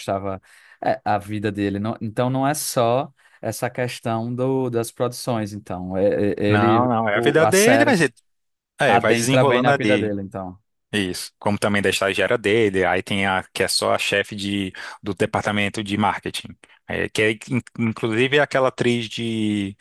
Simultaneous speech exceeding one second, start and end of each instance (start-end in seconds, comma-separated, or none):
6.5-8.0, 8.9-10.2